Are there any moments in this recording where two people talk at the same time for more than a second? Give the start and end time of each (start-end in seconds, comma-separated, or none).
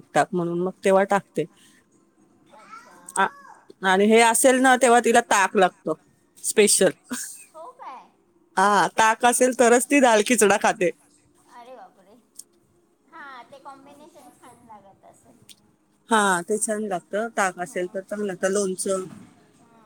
none